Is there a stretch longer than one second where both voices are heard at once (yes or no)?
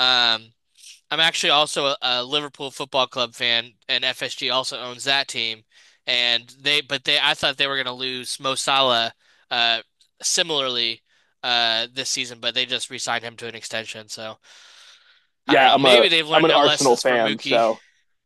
yes